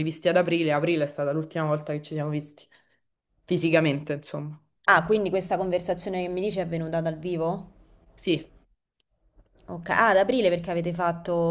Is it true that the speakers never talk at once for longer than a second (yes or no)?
yes